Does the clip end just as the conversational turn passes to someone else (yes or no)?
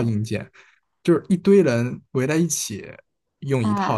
no